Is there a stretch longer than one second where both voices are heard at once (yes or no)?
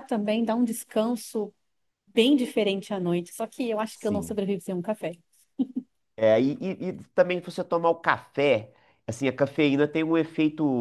no